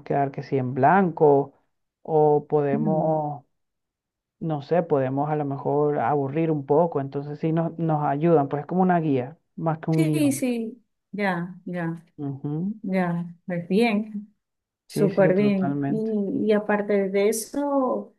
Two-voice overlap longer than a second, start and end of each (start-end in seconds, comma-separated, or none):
14.9-16.1